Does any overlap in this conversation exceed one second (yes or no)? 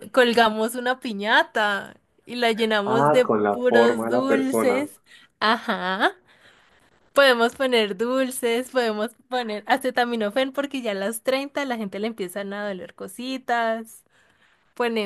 yes